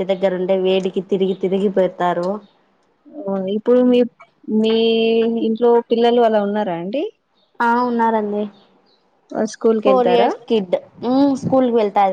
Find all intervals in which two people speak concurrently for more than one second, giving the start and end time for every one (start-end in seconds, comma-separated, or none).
none